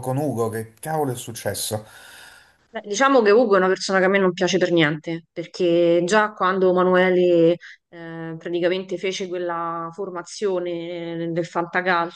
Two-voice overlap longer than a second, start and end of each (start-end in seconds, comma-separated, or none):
none